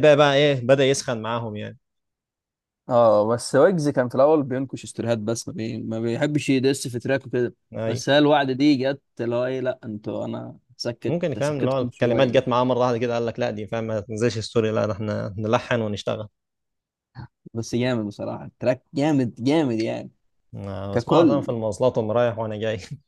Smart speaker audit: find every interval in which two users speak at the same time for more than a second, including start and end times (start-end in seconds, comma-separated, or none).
11.1-12.6